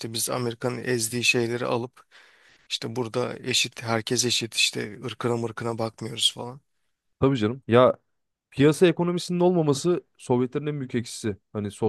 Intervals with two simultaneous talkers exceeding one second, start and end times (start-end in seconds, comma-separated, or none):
none